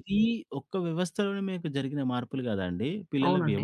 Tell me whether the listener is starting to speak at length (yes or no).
no